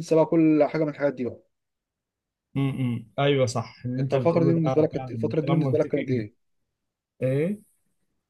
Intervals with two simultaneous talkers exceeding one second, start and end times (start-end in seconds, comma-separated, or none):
4.0-6.2